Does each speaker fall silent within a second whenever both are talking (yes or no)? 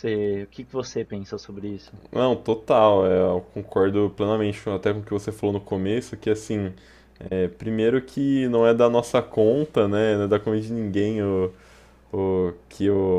yes